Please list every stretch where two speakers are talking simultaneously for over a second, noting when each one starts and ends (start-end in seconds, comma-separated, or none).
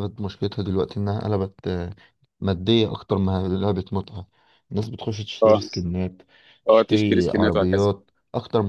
6.7-7.9